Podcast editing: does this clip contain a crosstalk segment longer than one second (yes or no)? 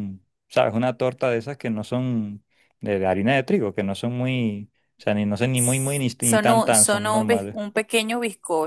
yes